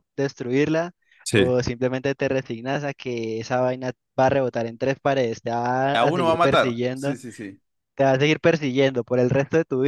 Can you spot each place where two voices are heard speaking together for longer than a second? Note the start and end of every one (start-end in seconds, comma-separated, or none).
5.8-7.2